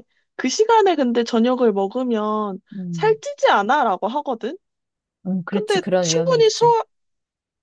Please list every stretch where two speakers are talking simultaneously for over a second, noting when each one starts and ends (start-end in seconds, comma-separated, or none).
5.5-6.7